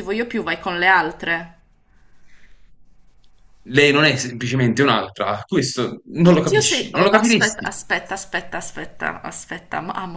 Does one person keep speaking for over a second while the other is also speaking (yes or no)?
yes